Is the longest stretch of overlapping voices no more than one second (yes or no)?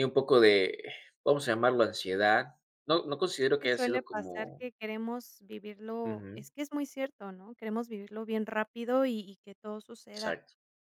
no